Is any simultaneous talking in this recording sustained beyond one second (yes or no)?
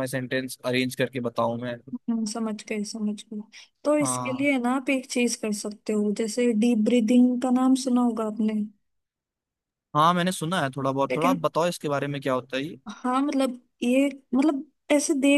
no